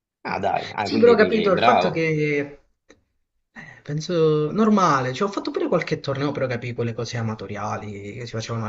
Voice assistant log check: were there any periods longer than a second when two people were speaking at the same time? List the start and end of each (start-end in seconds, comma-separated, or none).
0.8-2.1